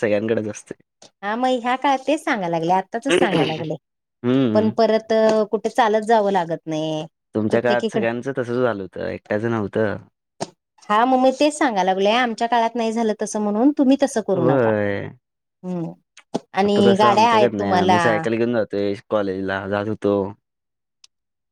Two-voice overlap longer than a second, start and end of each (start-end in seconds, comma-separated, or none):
16.6-18.0